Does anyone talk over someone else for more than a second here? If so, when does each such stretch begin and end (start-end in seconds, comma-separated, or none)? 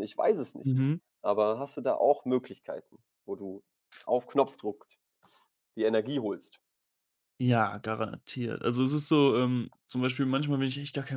none